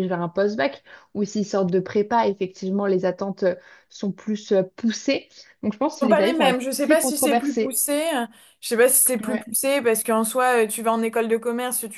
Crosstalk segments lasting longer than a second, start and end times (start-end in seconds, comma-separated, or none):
6.0-7.8